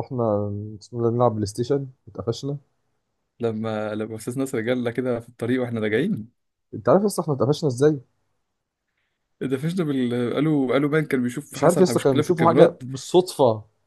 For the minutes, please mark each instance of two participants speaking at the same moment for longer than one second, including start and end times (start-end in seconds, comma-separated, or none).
11.5-12.8